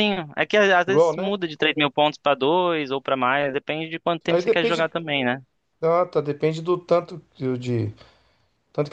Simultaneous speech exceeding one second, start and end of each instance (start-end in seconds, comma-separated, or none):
none